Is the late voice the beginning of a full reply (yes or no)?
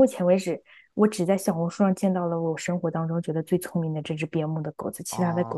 yes